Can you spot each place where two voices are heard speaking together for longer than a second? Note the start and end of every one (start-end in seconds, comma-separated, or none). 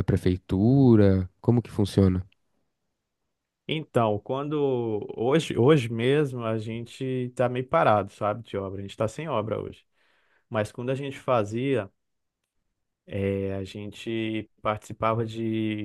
none